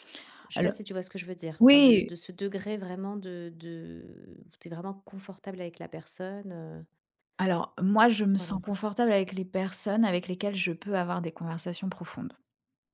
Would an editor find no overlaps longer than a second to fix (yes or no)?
yes